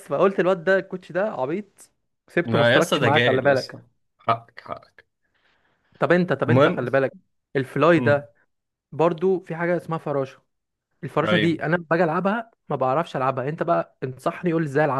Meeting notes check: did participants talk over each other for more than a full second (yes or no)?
yes